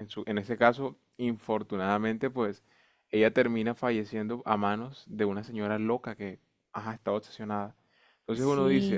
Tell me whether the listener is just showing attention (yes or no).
yes